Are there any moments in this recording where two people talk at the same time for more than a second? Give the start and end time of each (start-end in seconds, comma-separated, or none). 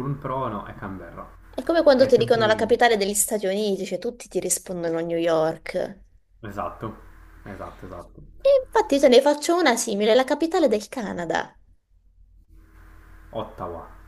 none